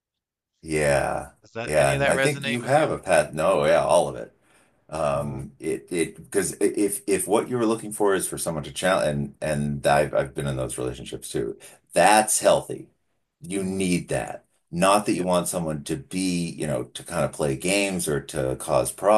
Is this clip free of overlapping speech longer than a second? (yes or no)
no